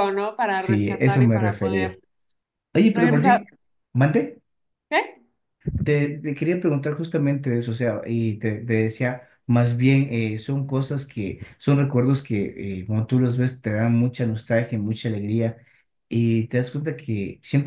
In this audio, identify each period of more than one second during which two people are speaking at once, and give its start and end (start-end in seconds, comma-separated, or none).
0.6-2.0